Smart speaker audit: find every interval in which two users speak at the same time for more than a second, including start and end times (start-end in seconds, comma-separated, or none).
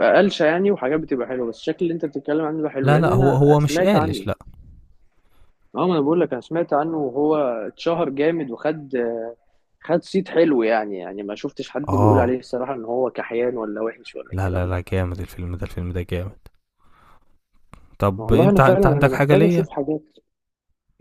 2.8-4.2, 18.2-19.7